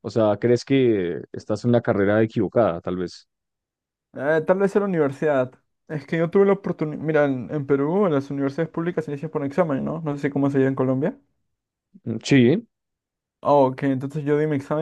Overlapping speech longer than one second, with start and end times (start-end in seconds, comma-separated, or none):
none